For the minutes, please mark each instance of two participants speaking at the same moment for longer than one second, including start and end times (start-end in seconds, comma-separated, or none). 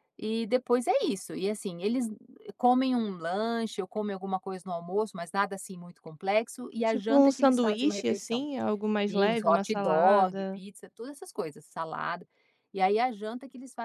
6.8-8.4, 9.1-10.6